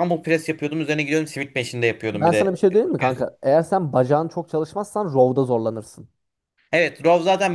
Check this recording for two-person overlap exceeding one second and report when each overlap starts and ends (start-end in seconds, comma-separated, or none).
none